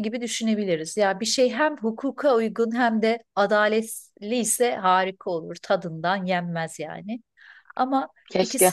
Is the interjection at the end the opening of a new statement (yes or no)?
no